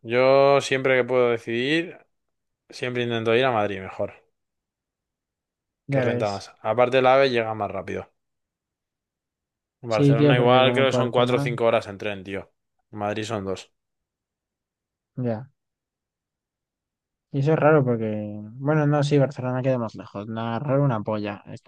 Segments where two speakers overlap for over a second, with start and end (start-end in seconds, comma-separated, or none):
9.9-11.5